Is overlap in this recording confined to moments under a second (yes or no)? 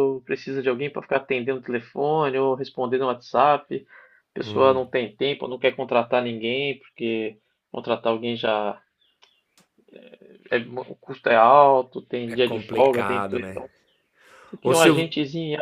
no